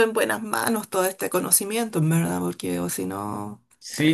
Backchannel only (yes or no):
no